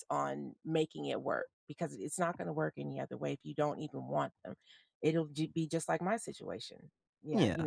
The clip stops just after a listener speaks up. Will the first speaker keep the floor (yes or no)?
no